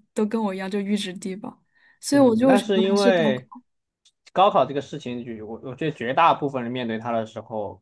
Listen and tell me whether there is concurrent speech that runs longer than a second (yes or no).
yes